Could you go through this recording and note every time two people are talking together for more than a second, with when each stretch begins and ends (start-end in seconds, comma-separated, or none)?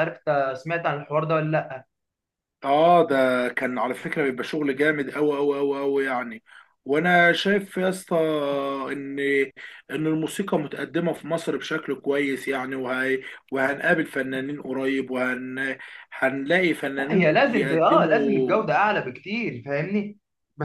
17.0-18.6